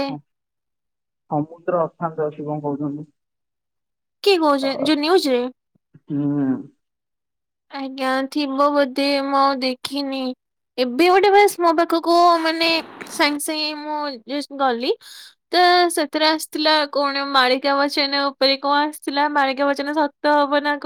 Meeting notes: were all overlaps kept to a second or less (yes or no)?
yes